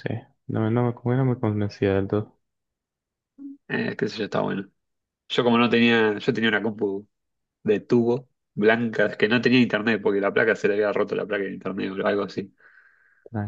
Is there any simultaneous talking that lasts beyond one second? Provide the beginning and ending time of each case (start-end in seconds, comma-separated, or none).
none